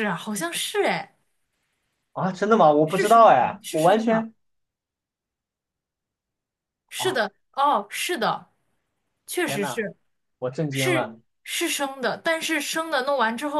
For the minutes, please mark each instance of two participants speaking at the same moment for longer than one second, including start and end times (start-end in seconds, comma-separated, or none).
2.8-4.3